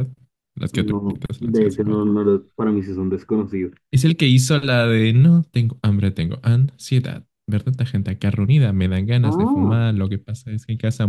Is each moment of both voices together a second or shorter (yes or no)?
no